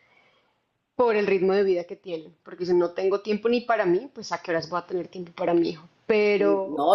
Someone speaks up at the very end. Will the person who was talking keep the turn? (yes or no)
no